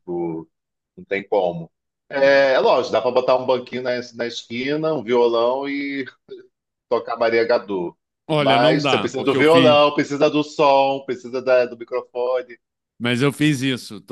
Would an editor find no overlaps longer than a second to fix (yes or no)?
no